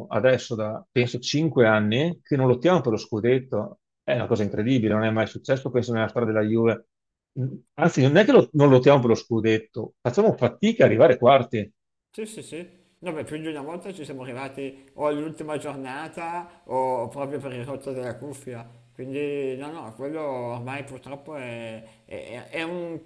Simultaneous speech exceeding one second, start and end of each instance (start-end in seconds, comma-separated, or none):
none